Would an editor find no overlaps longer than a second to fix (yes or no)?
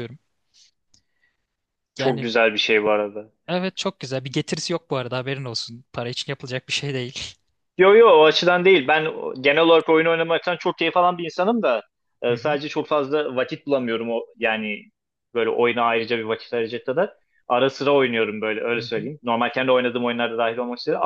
yes